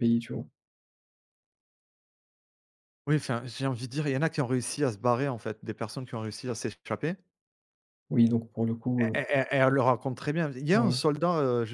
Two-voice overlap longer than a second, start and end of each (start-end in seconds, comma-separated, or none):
none